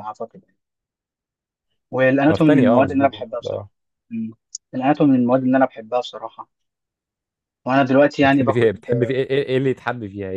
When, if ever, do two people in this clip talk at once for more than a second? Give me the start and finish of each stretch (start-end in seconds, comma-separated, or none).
2.3-3.7